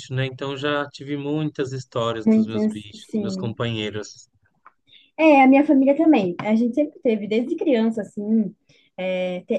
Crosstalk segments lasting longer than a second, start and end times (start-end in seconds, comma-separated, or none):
2.2-3.5